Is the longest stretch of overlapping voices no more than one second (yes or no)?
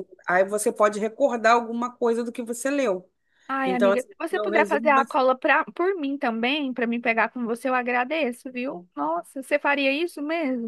no